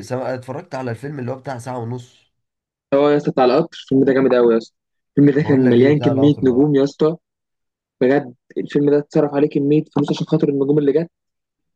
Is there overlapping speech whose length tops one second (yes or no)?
yes